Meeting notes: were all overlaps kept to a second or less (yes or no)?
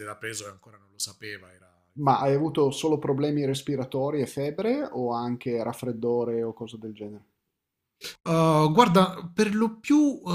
yes